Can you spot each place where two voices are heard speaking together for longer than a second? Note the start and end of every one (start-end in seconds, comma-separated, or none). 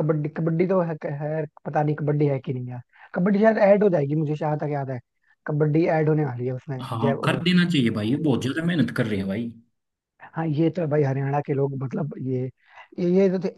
none